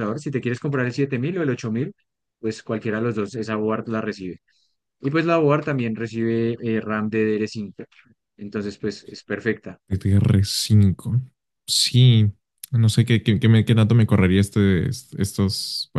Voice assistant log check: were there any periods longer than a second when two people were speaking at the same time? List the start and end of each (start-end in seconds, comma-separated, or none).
none